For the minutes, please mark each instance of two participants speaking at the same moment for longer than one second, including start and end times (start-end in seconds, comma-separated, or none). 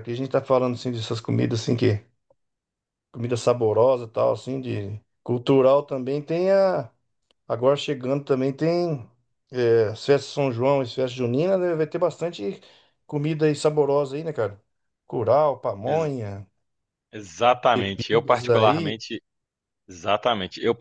17.7-19.0